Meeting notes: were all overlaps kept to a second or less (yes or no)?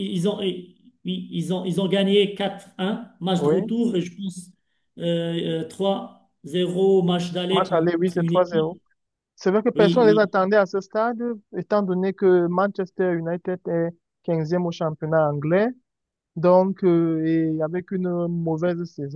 no